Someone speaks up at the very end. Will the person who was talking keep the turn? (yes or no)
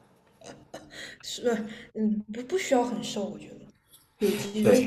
no